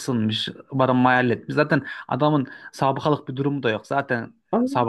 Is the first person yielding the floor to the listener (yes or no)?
yes